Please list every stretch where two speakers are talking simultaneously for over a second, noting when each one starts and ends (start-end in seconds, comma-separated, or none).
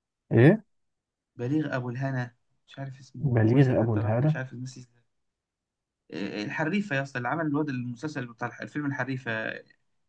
3.2-4.4